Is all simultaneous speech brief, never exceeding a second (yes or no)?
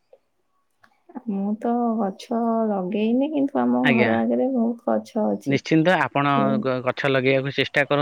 yes